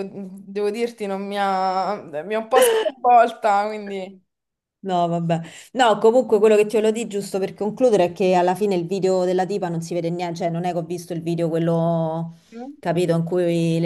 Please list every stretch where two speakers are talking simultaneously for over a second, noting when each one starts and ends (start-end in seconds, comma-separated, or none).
none